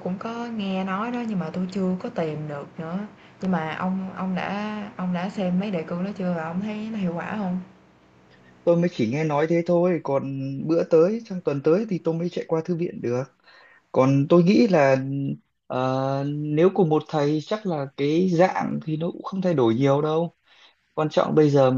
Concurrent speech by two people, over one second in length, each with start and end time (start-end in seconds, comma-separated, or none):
none